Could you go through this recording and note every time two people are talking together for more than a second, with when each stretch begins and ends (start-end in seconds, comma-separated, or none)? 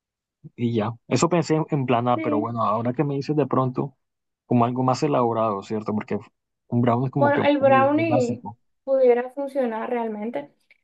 7.2-8.4